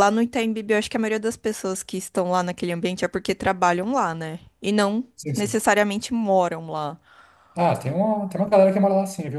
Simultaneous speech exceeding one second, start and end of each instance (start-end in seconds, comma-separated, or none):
none